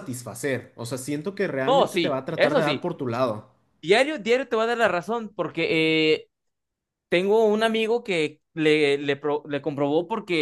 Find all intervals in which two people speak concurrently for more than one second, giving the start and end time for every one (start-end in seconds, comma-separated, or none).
1.7-2.9